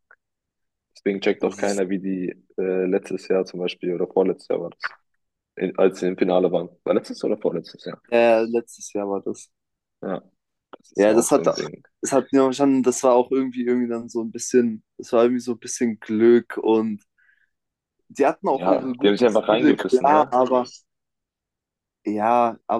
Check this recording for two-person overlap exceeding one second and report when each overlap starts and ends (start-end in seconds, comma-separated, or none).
18.5-20.4